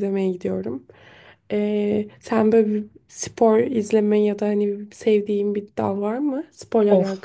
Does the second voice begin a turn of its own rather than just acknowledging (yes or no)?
yes